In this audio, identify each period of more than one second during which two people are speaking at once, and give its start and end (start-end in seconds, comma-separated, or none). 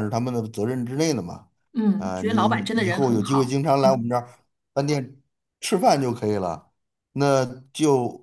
2.0-4.1